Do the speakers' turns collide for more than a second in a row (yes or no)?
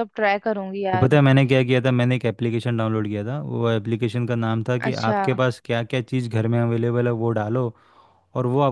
no